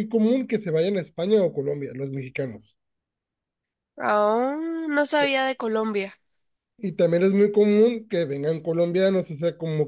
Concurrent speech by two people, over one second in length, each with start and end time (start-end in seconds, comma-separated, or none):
none